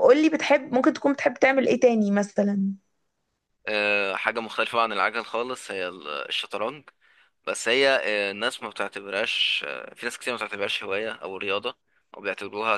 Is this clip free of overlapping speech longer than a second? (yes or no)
yes